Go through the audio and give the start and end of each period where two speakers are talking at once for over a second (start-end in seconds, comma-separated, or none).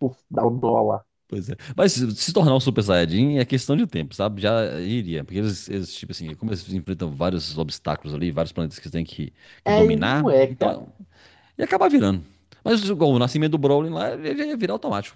9.6-10.9